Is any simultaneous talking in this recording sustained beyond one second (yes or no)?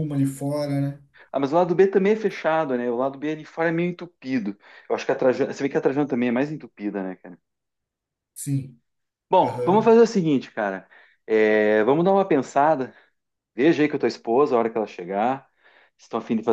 no